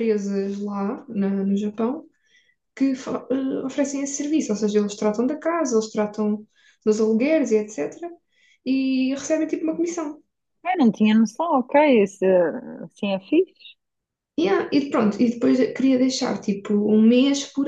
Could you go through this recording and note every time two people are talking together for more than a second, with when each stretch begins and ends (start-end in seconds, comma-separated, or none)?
none